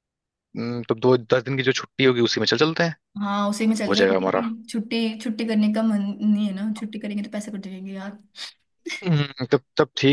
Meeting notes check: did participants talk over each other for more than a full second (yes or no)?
no